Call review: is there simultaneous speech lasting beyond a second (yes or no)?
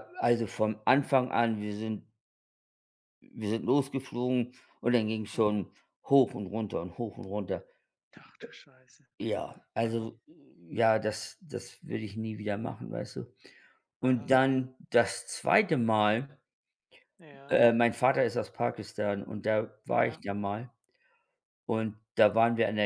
no